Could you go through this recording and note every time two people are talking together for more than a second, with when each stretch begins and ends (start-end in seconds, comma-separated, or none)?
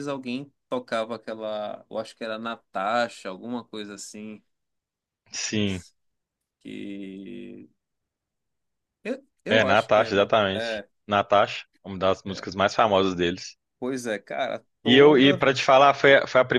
9.5-10.9